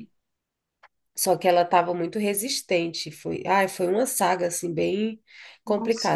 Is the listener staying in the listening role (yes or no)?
yes